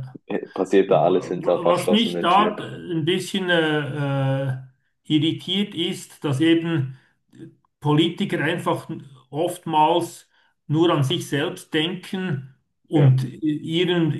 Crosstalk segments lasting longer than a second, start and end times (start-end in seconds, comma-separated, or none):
0.8-2.6